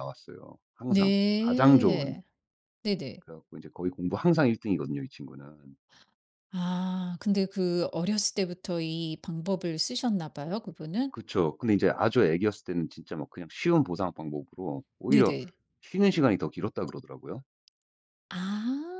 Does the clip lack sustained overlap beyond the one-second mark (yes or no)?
no